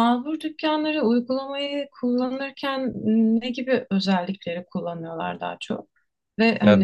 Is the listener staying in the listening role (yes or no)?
yes